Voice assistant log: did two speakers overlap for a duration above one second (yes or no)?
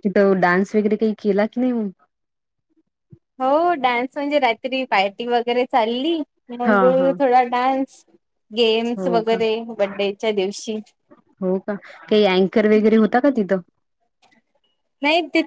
no